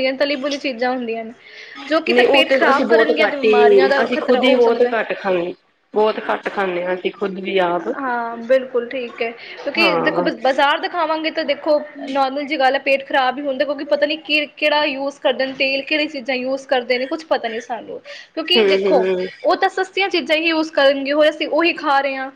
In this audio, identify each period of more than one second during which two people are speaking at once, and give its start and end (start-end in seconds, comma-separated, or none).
2.1-4.9